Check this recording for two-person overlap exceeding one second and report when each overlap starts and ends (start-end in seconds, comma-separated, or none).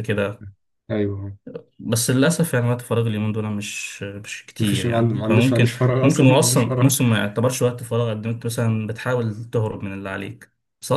4.6-7.0